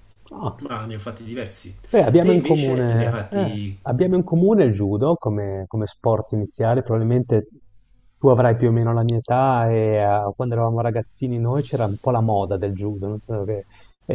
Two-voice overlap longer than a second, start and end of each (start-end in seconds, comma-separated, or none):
2.2-3.8